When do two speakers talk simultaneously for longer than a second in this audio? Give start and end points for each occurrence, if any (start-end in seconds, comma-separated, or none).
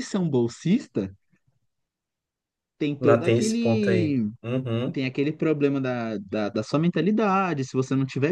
3.0-4.3